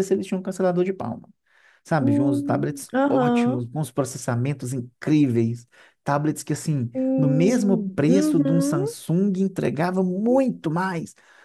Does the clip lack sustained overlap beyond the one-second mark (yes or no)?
no